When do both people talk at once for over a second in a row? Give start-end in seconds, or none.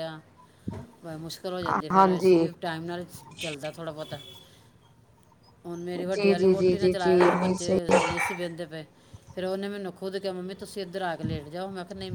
6.1-7.8